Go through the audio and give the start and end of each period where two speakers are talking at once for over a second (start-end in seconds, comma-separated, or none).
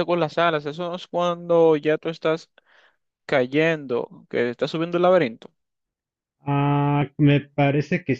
none